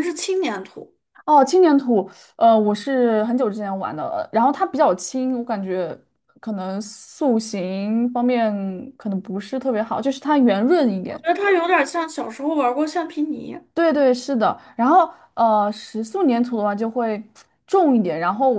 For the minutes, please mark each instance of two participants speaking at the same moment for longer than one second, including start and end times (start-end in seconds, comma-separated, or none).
none